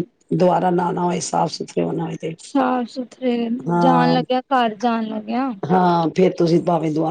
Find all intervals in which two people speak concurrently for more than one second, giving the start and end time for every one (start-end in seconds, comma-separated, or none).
none